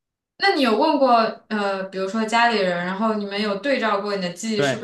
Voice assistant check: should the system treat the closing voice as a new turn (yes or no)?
yes